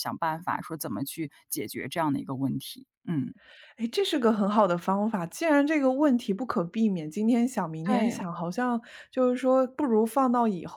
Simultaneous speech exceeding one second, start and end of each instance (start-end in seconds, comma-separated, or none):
none